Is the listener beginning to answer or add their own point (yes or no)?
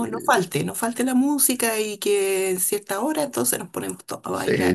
yes